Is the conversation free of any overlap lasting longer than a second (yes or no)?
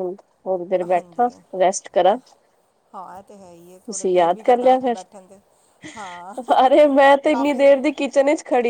no